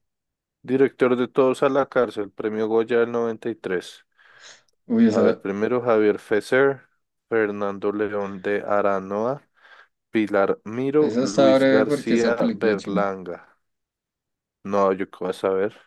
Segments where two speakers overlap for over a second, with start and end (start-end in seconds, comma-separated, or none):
11.0-13.1